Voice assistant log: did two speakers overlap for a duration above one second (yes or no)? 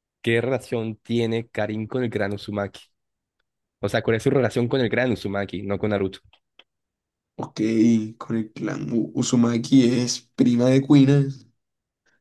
no